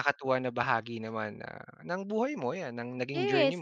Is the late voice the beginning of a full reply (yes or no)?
yes